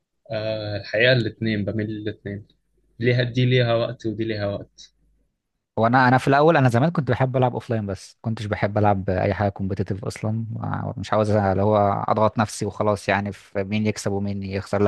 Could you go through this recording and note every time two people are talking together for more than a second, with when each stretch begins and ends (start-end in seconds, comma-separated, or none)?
none